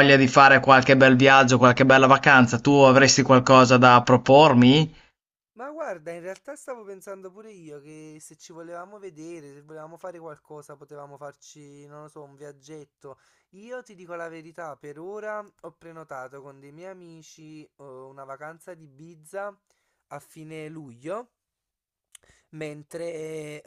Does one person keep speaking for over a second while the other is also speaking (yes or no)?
no